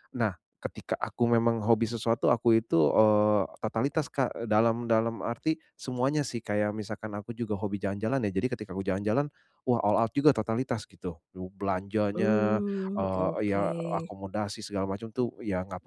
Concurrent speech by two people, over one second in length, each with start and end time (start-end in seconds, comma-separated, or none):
12.2-14.1